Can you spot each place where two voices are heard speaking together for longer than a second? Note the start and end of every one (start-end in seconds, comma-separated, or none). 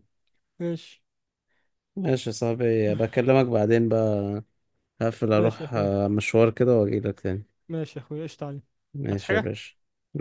none